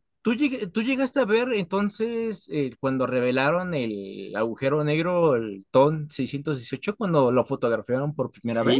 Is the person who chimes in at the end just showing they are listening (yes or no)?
no